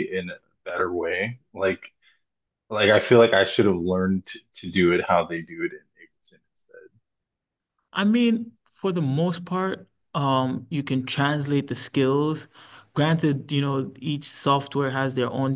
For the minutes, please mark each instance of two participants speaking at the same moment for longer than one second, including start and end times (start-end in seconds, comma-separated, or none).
none